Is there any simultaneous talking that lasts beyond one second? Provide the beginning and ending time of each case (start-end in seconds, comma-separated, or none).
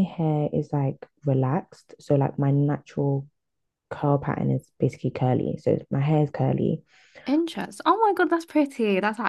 none